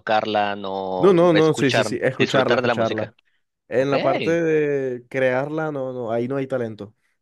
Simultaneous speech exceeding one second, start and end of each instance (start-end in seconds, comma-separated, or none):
1.0-3.1